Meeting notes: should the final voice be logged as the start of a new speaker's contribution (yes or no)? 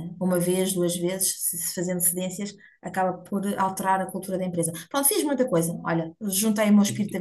yes